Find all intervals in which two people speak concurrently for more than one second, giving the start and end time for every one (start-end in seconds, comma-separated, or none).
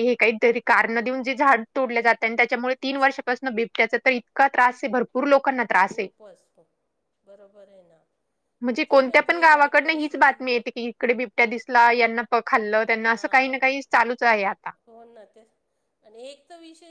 8.7-10.4